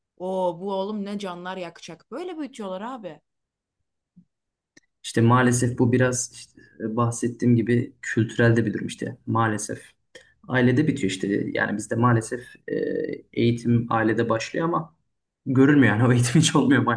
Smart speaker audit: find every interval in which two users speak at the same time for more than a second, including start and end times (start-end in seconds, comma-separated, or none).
none